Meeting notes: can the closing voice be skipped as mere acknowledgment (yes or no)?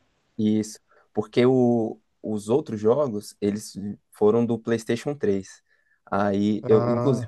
yes